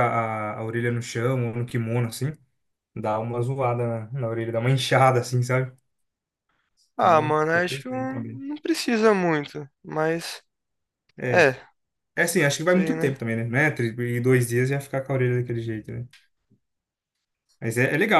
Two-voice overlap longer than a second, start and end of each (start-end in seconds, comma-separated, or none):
7.0-8.4